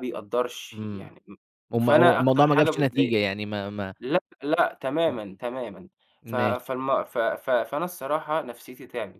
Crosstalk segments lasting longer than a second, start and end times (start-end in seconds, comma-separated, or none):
1.8-3.2